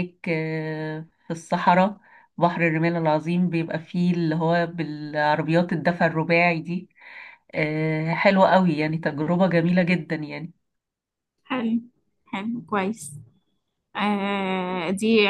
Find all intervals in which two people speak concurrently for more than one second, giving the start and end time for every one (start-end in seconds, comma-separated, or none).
none